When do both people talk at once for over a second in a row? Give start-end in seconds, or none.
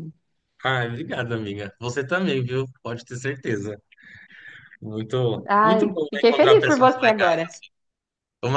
5.5-7.5